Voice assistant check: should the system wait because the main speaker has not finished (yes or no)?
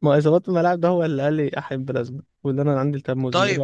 no